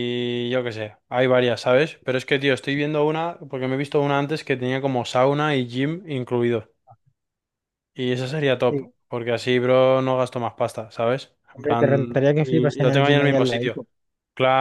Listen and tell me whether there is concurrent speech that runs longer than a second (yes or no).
yes